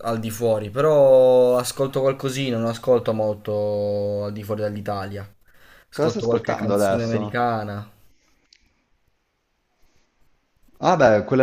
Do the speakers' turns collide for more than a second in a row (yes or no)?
yes